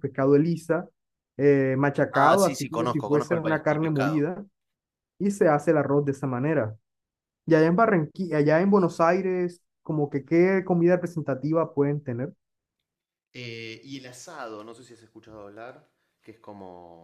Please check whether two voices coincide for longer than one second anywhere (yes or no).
yes